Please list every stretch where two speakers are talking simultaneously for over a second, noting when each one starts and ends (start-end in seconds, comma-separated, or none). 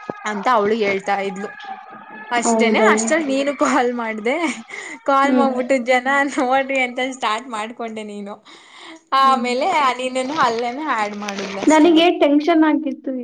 none